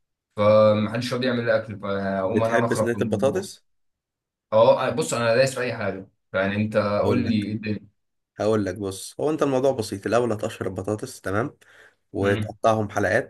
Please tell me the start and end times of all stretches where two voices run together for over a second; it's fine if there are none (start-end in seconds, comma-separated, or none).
2.2-3.5